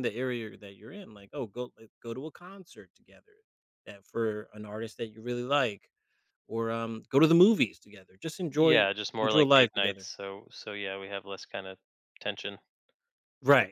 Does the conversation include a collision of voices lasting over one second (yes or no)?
yes